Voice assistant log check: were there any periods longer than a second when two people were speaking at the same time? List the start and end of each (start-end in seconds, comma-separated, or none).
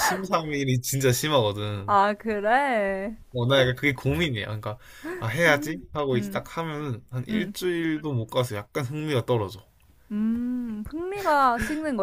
none